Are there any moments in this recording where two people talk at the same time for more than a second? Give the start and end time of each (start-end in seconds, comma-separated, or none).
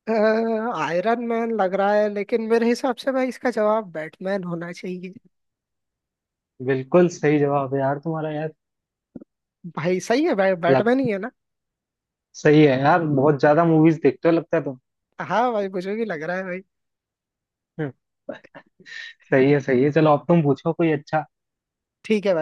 none